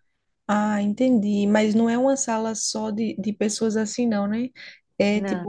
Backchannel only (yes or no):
yes